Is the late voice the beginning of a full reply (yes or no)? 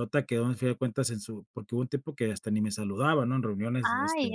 yes